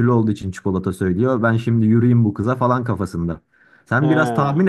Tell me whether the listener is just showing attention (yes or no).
yes